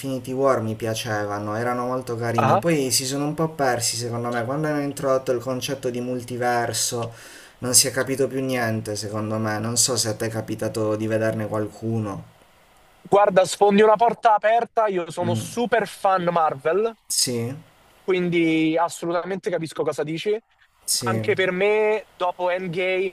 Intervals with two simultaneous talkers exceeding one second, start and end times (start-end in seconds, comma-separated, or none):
none